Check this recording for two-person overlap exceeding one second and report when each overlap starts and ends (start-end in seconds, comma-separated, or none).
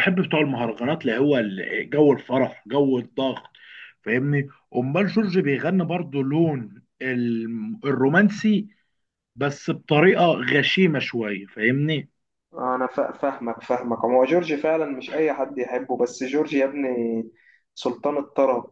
none